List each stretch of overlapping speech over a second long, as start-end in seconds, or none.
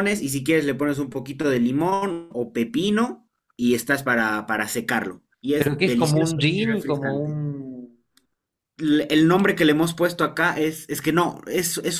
5.6-7.4